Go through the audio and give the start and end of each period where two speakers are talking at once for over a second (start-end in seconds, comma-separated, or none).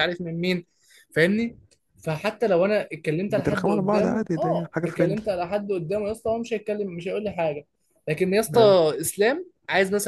3.3-5.2